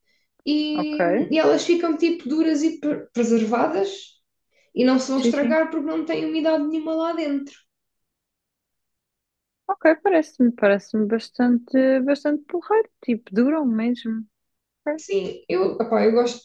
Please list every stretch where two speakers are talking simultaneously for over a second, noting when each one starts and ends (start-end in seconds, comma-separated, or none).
none